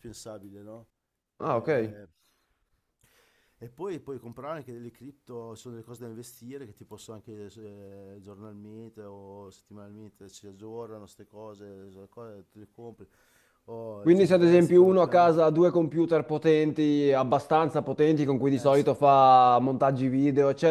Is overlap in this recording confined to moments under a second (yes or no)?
no